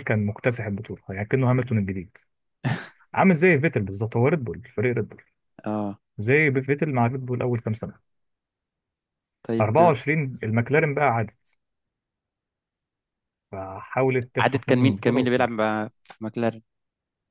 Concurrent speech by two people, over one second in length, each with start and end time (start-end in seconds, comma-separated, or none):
14.4-15.8